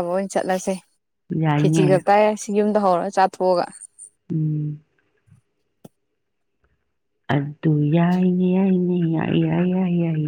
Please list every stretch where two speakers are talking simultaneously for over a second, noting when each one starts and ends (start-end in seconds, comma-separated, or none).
none